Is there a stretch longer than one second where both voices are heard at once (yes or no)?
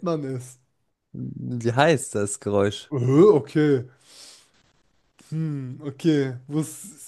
no